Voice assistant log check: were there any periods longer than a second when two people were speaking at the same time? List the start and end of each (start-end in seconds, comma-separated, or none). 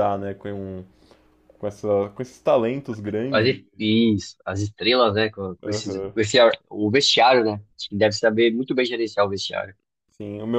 none